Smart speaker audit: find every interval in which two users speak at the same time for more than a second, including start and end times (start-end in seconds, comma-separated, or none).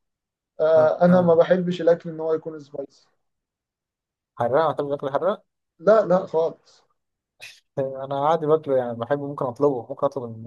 none